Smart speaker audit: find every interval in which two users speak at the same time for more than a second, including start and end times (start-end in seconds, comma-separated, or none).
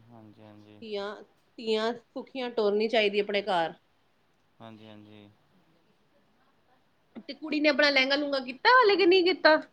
none